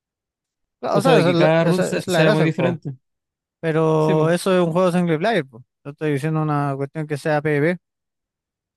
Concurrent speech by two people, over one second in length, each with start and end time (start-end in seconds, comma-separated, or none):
0.9-2.8